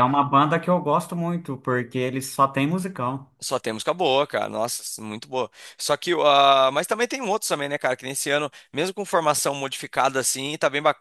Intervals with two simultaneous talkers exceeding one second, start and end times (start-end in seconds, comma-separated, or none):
none